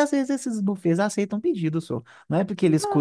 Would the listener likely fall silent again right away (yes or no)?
yes